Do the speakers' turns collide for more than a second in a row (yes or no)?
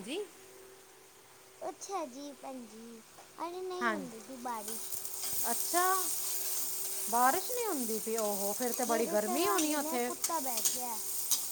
yes